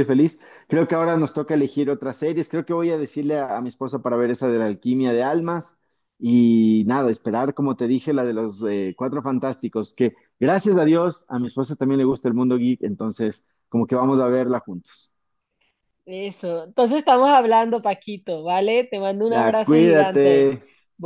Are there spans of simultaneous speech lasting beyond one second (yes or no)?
yes